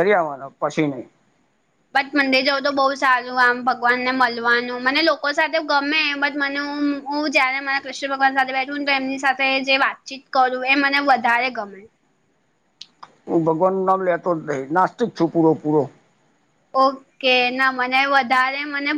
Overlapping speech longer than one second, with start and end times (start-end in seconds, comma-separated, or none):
none